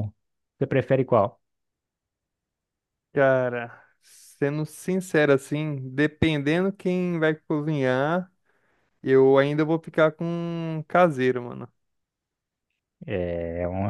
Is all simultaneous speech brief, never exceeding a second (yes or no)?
yes